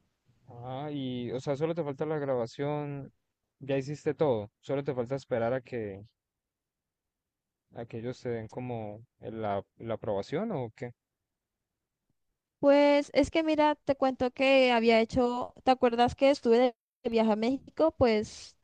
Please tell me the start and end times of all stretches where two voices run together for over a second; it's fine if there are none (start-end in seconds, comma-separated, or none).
none